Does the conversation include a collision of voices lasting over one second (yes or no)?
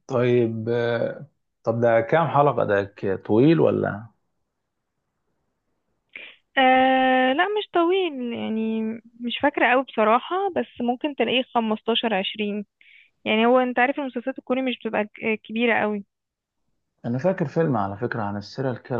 no